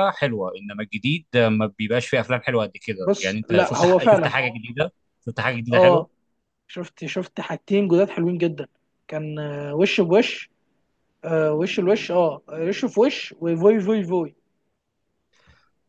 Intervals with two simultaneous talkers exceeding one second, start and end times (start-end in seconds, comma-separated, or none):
3.0-4.3